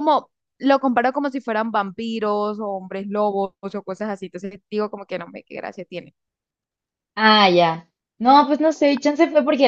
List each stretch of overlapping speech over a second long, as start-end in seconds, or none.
none